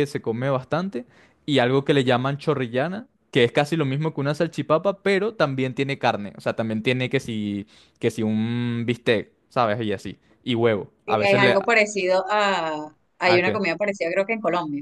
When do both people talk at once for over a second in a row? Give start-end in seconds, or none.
none